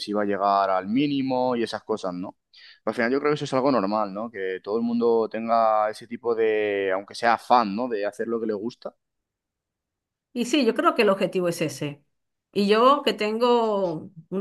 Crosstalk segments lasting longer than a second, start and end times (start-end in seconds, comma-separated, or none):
none